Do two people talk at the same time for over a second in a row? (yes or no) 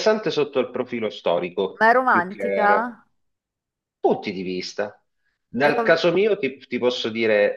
yes